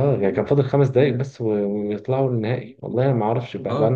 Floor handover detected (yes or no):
no